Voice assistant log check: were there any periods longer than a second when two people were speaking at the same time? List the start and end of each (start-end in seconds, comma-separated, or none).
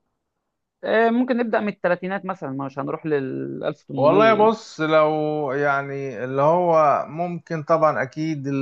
none